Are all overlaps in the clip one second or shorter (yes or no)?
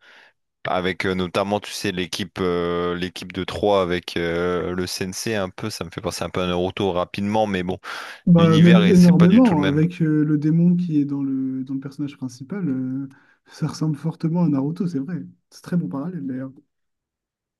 no